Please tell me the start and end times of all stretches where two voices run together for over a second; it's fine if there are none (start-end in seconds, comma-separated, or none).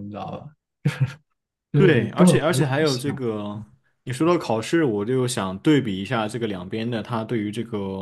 1.7-3.2